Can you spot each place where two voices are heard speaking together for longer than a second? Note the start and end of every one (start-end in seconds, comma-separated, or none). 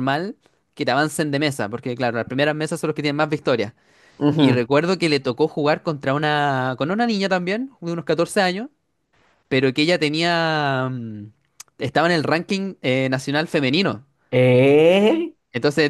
none